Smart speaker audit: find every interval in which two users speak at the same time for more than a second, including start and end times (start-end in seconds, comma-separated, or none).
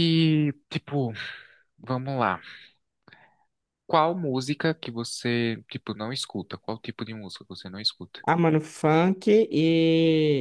none